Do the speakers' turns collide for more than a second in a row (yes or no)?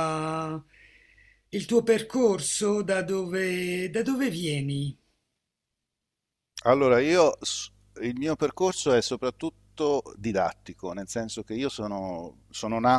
no